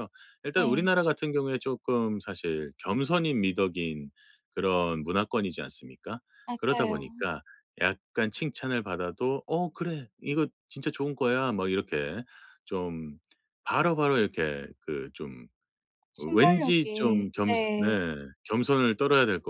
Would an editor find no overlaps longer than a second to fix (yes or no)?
no